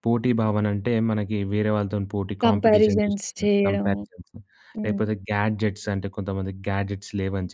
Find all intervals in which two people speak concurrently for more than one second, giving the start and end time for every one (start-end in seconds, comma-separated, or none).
2.5-4.0